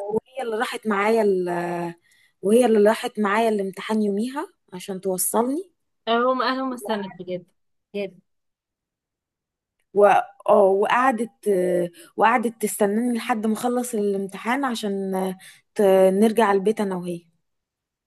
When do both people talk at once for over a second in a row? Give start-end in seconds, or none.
none